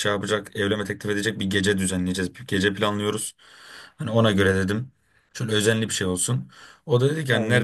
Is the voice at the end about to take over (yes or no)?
no